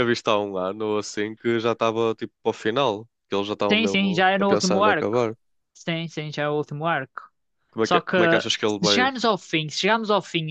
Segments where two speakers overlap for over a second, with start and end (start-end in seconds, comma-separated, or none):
3.7-5.2